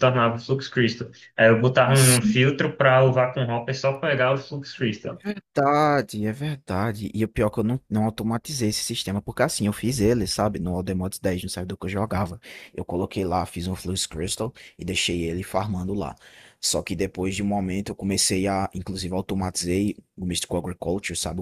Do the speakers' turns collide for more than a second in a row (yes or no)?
no